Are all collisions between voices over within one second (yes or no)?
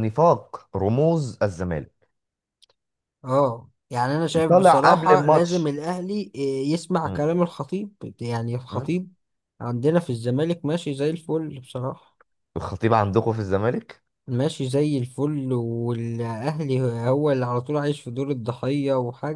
no